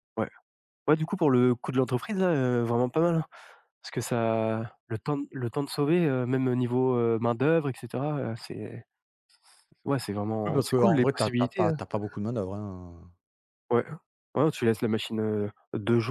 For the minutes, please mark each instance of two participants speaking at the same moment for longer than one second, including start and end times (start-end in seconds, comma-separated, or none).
10.5-11.8